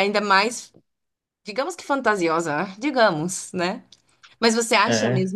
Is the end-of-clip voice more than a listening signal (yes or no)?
no